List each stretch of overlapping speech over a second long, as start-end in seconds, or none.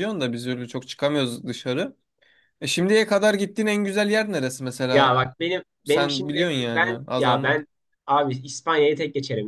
5.8-7.6